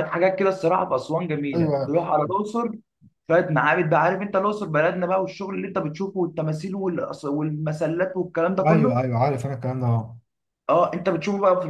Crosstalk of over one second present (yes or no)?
no